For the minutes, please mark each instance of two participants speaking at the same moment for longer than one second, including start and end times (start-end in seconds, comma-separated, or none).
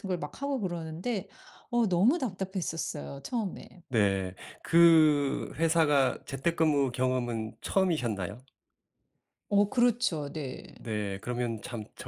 none